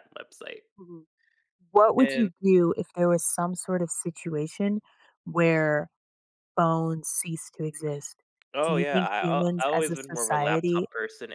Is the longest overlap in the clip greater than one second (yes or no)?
yes